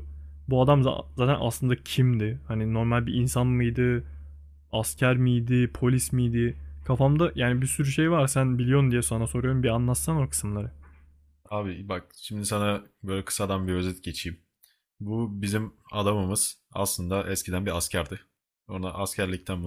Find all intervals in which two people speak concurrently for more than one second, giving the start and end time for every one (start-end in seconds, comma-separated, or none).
none